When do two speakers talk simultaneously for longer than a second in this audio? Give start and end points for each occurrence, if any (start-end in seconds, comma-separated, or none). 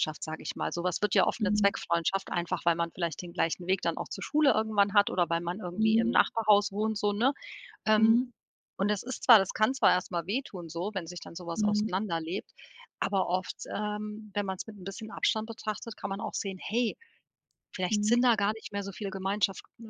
none